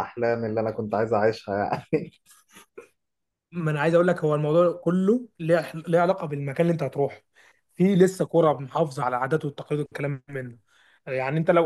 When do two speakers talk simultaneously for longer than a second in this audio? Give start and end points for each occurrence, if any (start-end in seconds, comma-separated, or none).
none